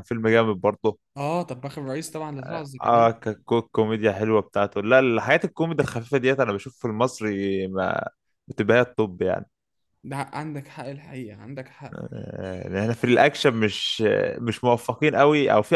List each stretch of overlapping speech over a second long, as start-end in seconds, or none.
none